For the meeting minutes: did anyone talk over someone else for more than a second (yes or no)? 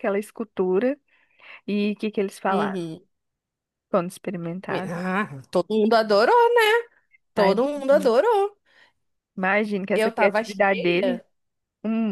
yes